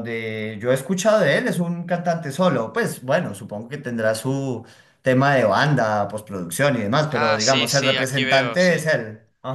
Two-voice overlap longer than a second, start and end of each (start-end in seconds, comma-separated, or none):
7.1-8.8